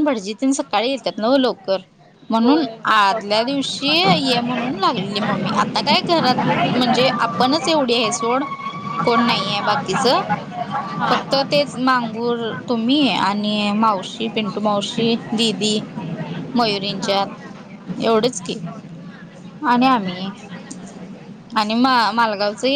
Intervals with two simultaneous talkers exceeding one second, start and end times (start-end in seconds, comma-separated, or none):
2.4-3.8